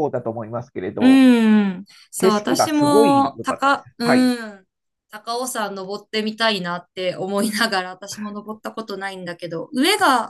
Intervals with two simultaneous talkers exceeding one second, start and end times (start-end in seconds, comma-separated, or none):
2.2-4.3